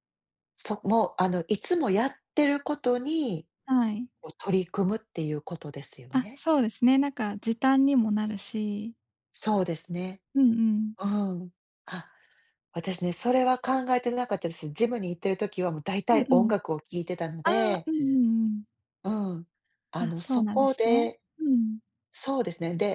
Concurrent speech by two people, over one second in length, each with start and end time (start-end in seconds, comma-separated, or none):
20.0-21.2